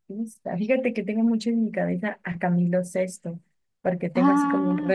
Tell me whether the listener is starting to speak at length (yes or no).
no